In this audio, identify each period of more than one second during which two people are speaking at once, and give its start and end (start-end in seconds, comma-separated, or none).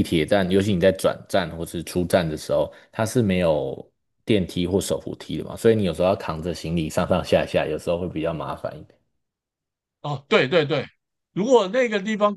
none